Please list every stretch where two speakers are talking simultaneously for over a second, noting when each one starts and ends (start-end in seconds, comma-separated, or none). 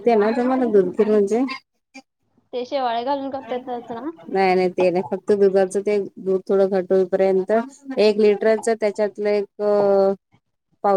none